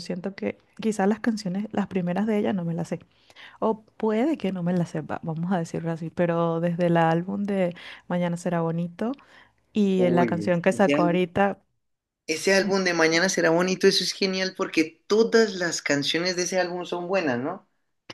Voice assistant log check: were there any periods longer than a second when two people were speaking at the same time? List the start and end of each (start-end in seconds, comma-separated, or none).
10.0-11.2